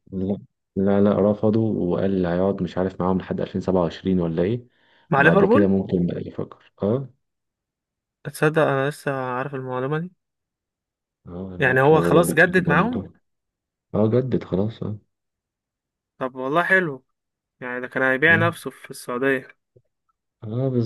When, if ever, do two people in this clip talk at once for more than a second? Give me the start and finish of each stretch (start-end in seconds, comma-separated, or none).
11.6-13.0